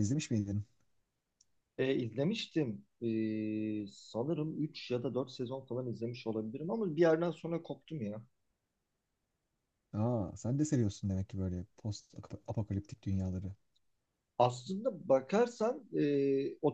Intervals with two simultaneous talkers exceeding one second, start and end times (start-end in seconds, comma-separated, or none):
none